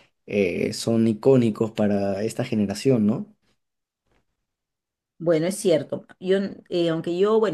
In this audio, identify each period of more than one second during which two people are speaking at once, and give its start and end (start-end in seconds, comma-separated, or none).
none